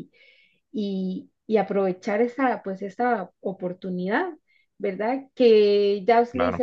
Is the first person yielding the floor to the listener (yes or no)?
no